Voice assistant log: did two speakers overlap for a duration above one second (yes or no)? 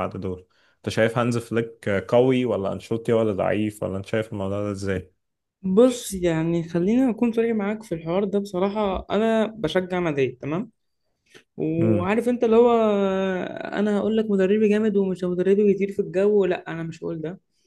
no